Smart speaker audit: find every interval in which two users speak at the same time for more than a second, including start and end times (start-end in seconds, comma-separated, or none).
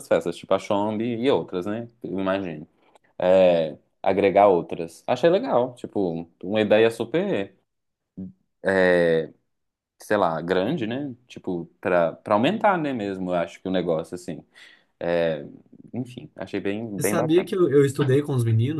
none